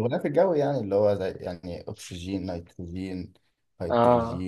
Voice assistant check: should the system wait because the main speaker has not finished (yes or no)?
no